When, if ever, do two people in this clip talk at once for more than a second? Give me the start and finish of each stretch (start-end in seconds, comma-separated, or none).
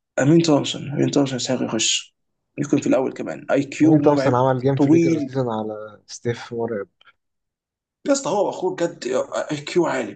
3.8-5.4